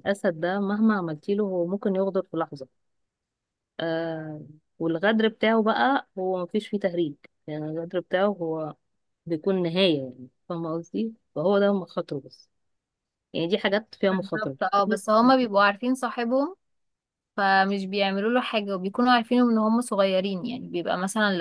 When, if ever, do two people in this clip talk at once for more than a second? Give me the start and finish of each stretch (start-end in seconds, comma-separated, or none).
none